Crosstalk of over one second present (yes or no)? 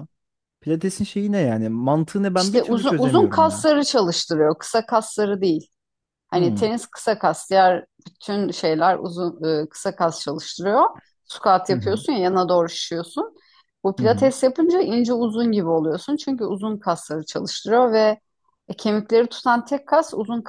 yes